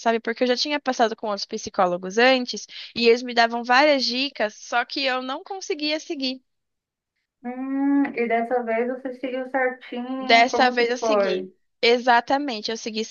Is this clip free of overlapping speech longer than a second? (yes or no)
no